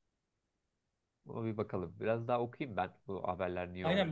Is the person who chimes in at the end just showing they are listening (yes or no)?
no